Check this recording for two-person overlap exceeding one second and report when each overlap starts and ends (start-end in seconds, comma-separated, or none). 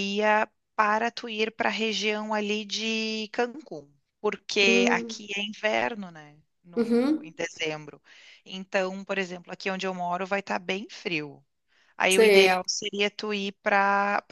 none